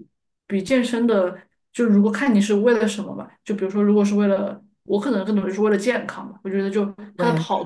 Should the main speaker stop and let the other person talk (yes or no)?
no